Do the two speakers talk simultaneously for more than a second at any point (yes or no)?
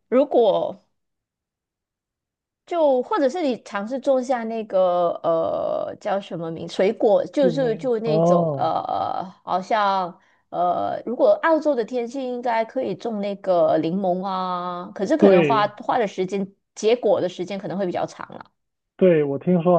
yes